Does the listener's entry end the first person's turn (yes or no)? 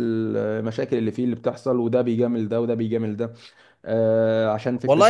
yes